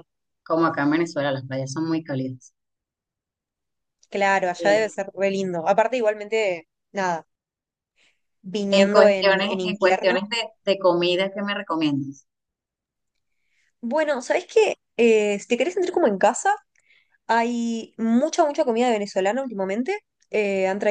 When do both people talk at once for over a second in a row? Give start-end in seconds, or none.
8.7-10.2